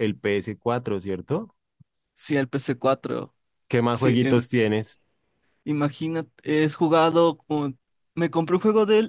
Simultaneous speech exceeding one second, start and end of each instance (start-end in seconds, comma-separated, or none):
none